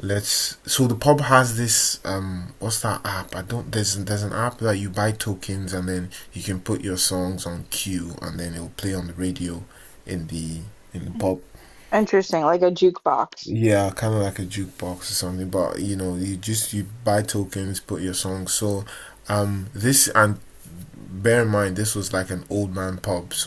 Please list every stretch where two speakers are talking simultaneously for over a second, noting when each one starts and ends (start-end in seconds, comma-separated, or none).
none